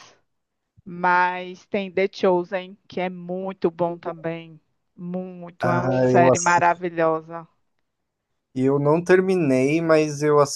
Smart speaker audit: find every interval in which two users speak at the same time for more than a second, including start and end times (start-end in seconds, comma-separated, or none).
5.6-6.9